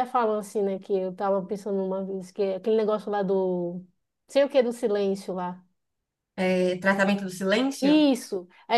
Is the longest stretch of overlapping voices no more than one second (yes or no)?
yes